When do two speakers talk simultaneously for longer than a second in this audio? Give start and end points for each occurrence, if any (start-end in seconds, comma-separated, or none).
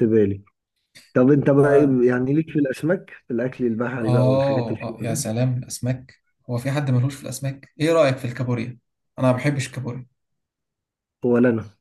4.0-5.3